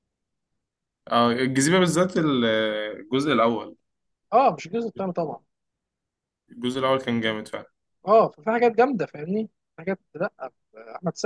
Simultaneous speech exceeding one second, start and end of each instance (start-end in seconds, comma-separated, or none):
none